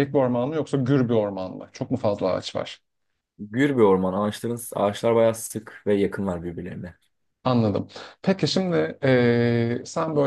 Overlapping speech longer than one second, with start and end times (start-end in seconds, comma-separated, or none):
none